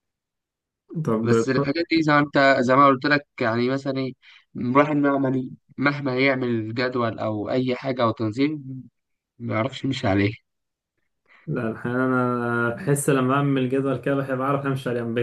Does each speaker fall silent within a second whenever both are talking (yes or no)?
yes